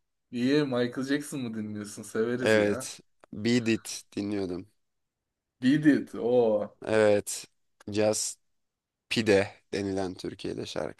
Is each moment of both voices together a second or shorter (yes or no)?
yes